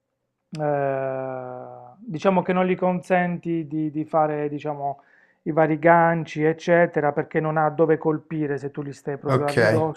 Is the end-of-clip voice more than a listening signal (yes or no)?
yes